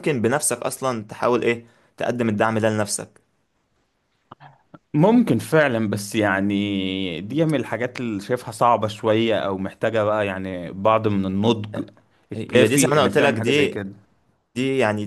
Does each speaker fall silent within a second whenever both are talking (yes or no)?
no